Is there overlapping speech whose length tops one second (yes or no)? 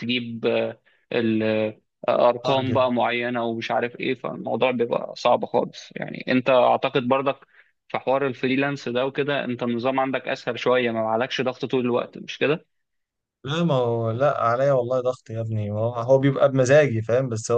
no